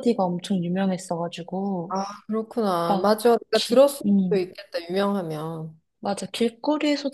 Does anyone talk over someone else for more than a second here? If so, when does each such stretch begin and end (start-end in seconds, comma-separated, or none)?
2.9-4.5